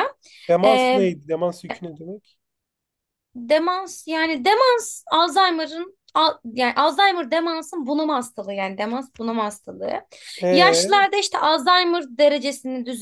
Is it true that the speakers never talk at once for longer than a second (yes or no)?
yes